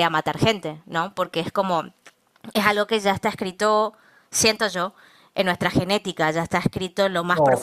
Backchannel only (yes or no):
no